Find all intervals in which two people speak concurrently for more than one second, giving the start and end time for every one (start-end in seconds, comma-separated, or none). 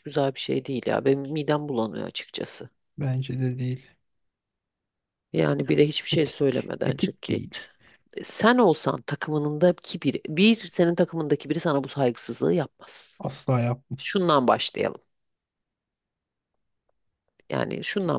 6.1-7.6